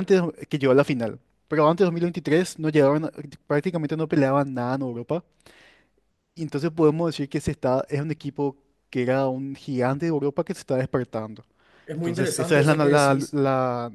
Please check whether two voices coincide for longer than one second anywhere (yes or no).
yes